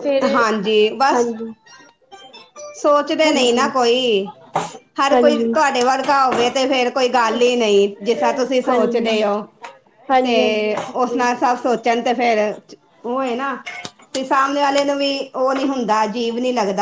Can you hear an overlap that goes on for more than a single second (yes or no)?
no